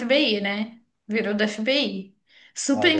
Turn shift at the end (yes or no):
yes